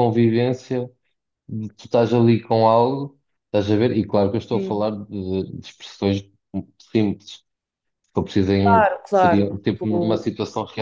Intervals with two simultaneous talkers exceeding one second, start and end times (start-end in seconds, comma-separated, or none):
8.6-10.3